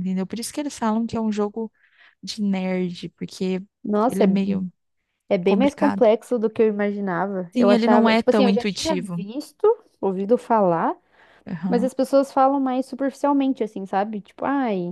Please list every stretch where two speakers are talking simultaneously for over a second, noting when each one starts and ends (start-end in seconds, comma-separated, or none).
7.5-9.2